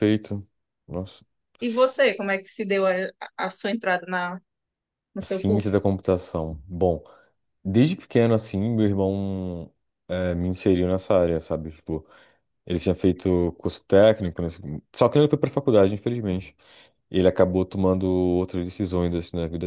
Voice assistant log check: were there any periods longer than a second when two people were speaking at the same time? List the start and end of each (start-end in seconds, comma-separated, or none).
none